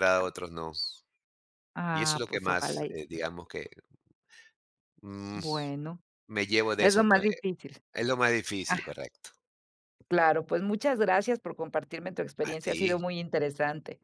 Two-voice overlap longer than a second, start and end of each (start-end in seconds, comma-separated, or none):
1.9-3.2